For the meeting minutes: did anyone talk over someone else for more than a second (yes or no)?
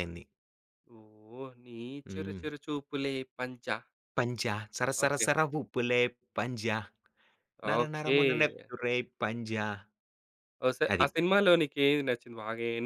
no